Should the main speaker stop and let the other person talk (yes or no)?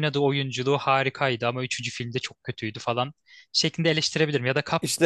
no